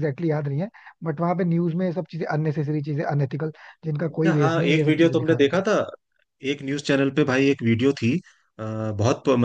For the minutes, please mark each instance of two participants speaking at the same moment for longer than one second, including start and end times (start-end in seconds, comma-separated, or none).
4.1-5.6